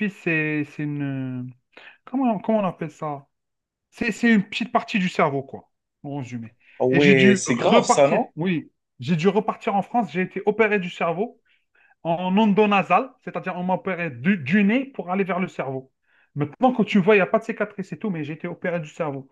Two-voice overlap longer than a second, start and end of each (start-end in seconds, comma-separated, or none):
6.9-8.3